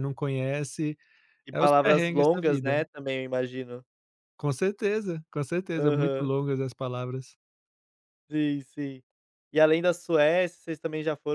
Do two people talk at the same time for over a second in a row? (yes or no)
yes